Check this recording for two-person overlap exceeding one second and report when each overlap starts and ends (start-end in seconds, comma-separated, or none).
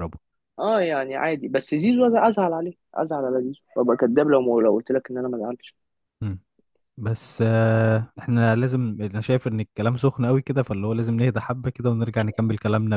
none